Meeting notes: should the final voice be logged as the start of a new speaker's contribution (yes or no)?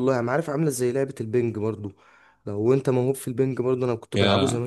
no